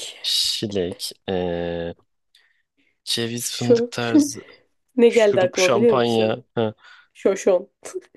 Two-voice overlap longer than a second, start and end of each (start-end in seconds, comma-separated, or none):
5.1-6.4